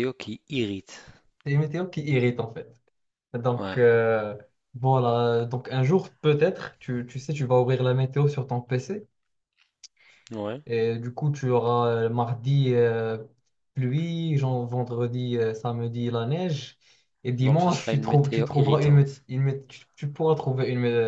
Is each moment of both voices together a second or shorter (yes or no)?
no